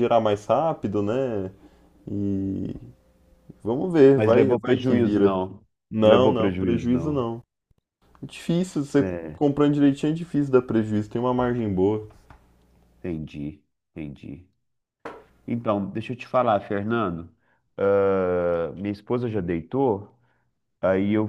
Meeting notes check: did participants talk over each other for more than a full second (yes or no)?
yes